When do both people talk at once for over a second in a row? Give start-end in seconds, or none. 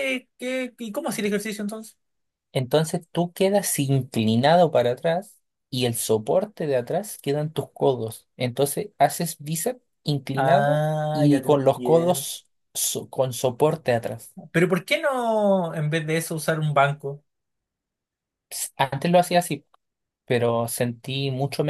10.3-12.3